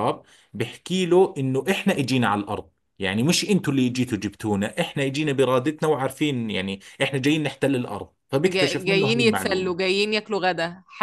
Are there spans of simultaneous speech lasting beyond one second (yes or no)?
yes